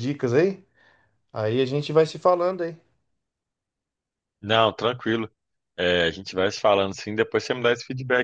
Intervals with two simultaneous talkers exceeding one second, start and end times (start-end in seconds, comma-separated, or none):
none